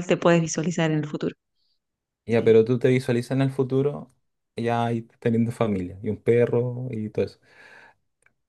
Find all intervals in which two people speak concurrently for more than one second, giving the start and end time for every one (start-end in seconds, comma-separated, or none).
none